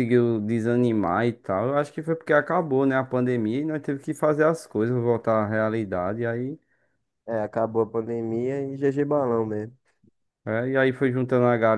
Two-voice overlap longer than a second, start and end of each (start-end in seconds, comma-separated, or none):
none